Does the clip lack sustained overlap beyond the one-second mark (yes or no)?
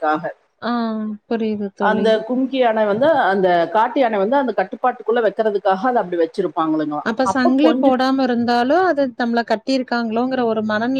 yes